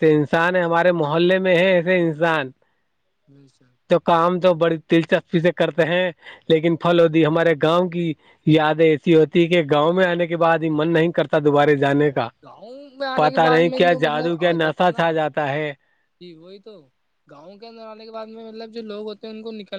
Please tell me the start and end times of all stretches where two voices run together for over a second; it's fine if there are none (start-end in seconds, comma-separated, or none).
13.2-15.0